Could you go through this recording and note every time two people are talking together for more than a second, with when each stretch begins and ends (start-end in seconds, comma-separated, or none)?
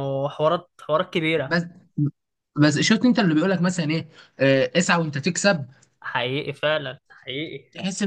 none